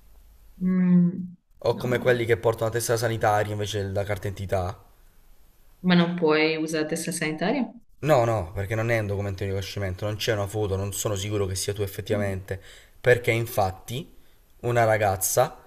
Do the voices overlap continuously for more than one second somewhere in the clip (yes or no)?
no